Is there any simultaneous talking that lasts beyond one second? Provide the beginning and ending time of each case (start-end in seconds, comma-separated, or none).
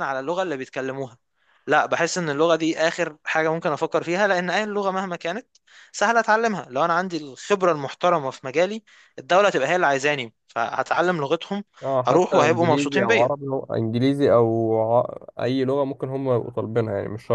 12.1-13.3